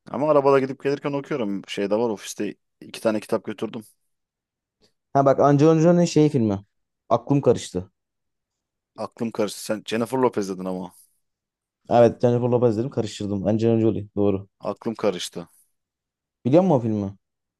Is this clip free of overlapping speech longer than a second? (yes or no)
yes